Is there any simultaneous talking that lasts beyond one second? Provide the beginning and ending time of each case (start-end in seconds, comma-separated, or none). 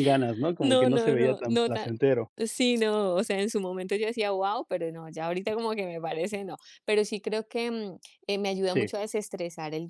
0.6-1.9